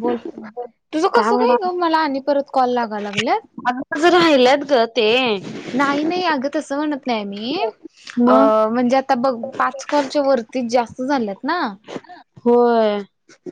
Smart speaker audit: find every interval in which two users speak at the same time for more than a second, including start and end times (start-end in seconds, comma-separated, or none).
none